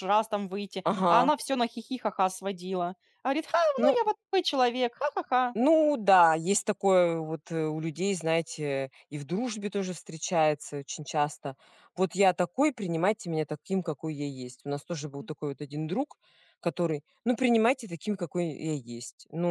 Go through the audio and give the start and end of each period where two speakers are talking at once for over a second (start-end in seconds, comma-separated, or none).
none